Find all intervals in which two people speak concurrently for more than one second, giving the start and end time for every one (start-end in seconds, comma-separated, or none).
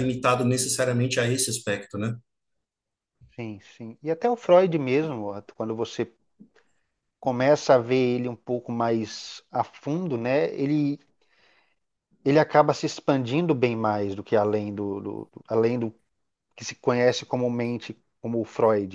none